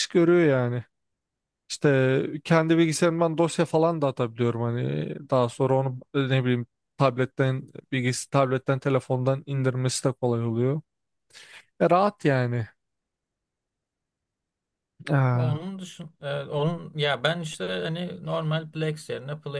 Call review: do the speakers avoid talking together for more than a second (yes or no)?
yes